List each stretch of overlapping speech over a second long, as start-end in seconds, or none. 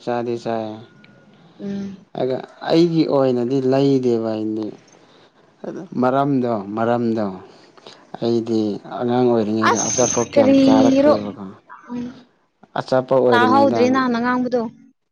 9.6-11.2